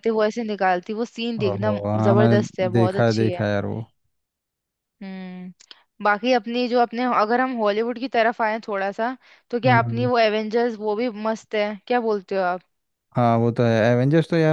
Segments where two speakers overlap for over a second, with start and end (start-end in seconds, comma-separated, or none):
1.4-3.5